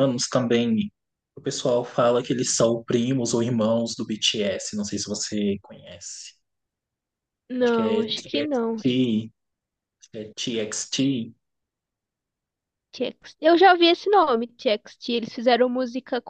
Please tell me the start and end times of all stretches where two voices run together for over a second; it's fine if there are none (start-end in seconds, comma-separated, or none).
7.6-8.8